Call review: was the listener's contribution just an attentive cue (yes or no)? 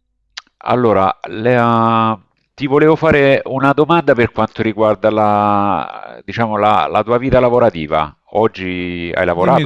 no